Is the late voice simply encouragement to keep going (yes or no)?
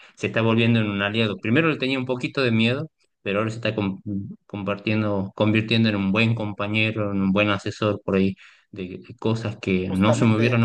yes